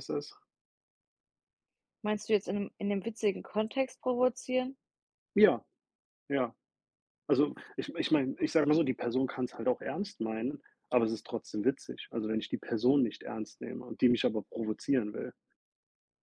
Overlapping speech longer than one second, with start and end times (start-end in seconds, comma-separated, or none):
none